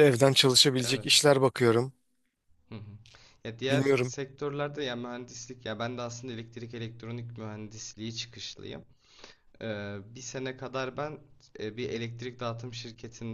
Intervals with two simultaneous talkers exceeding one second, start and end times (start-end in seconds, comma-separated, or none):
none